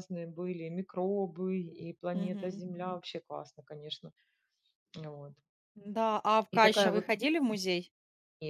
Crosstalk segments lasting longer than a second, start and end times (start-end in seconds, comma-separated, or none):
none